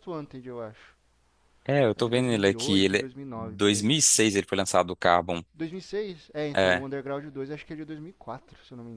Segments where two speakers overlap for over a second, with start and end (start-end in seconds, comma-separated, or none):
2.0-3.9